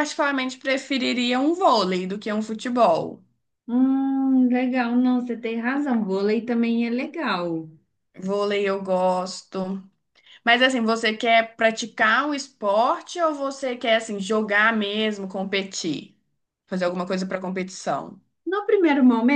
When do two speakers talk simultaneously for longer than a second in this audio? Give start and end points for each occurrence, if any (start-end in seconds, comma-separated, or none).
none